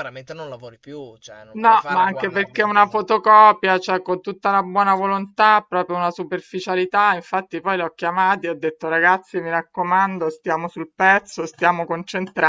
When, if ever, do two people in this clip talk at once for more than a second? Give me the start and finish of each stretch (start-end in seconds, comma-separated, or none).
1.6-3.1